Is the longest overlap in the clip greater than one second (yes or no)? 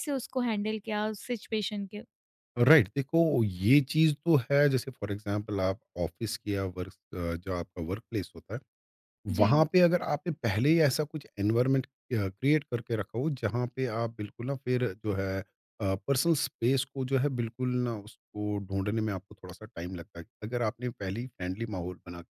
no